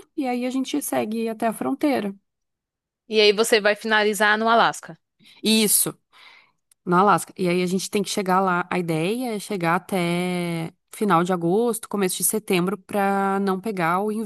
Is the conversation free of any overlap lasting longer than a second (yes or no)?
yes